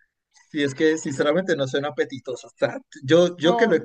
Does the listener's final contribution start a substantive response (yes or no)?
no